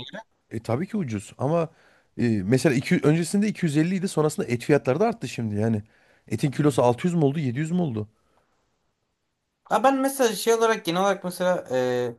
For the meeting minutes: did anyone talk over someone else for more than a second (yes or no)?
no